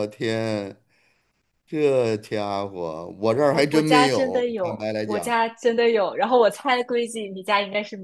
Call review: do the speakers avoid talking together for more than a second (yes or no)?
no